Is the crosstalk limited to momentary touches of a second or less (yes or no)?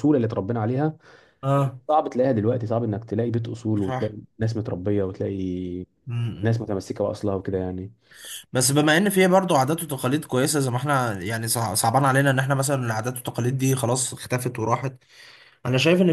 yes